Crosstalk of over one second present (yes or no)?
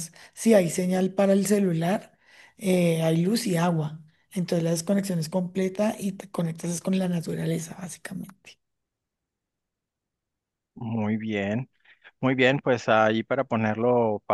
no